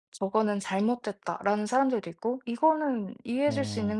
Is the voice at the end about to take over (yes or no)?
no